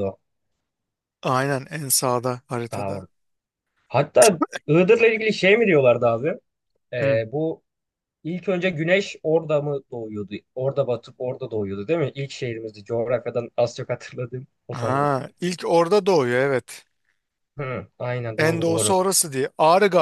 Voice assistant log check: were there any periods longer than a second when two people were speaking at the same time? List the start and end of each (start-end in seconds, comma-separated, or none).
none